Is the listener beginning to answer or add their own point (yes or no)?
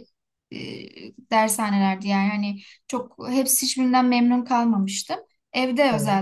no